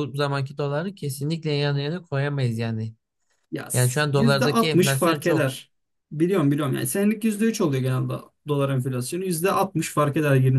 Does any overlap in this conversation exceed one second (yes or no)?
yes